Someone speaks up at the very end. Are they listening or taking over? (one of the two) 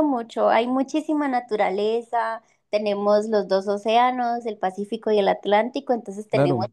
listening